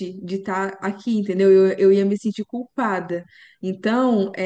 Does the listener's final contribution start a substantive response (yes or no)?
no